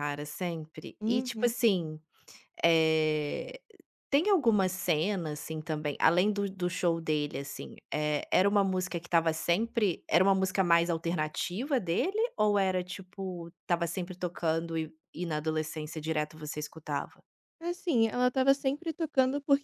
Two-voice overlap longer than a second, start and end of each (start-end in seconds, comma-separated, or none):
none